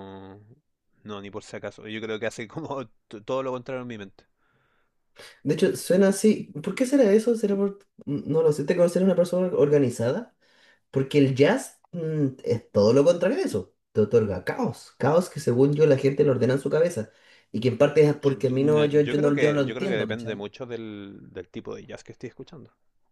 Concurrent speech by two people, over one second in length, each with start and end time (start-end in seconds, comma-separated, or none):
18.2-20.4